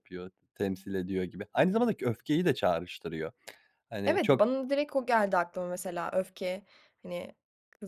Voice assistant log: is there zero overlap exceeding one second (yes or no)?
yes